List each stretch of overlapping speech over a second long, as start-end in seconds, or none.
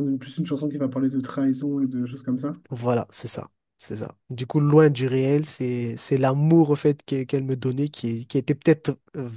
none